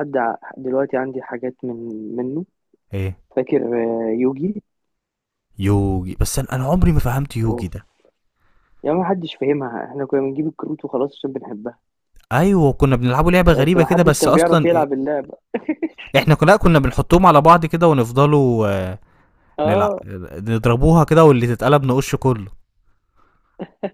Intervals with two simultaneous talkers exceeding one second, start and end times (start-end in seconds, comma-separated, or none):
13.5-14.9